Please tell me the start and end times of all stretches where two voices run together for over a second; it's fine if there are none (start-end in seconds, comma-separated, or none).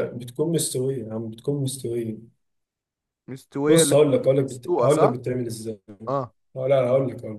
3.7-5.2